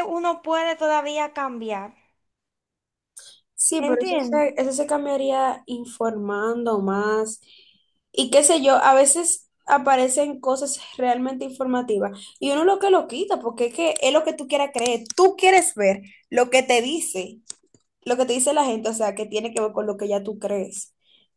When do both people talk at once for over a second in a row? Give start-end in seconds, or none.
none